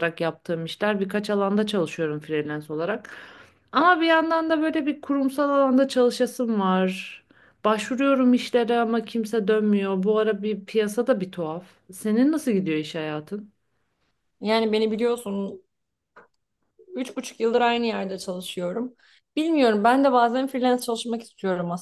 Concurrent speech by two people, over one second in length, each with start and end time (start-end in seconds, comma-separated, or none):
none